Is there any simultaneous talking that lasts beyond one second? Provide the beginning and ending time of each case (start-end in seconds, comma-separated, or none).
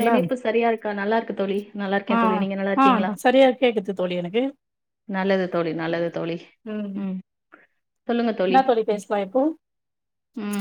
none